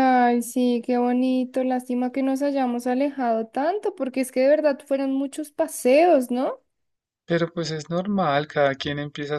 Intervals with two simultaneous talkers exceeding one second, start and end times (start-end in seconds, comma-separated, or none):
none